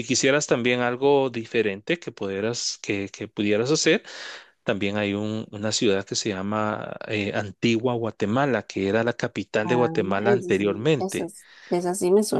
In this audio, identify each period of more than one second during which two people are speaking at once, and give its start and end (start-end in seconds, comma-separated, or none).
9.6-11.3